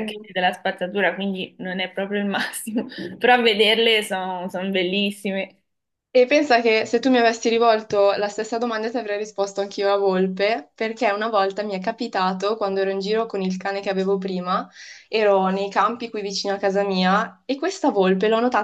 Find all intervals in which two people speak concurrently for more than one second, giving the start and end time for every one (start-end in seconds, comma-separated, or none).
none